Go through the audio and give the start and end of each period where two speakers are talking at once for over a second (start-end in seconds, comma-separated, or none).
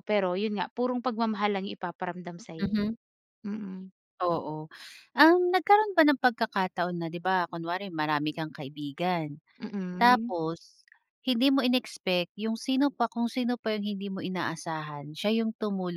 none